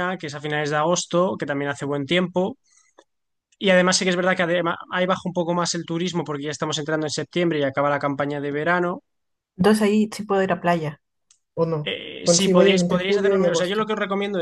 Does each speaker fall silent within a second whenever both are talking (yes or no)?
no